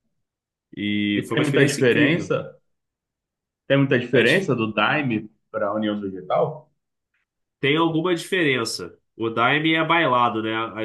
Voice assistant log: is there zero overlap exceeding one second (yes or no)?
no